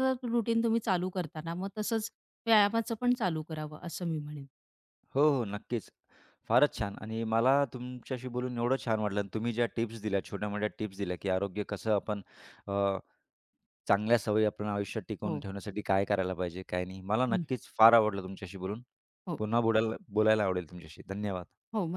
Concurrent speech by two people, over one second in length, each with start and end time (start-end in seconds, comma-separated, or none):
none